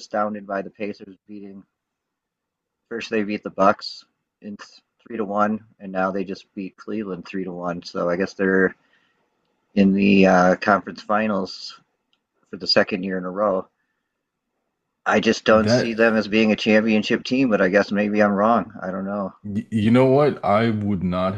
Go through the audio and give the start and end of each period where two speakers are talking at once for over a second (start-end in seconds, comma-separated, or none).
none